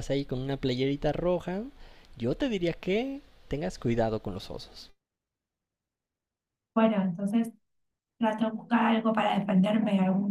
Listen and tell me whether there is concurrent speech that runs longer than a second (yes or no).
no